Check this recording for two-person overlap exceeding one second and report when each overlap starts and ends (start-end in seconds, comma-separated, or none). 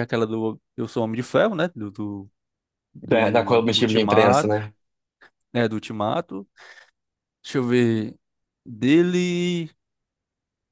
3.1-4.6